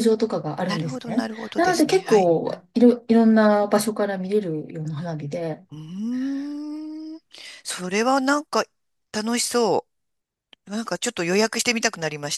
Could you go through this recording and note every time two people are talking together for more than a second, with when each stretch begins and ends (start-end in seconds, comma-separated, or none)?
0.6-2.3